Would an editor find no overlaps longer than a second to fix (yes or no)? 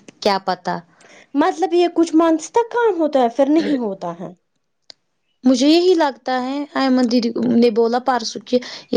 yes